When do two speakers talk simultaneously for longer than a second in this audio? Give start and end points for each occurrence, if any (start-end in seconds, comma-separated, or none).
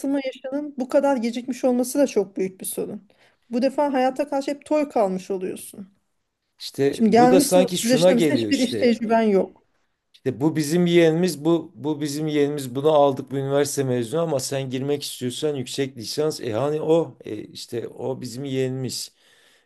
6.9-9.0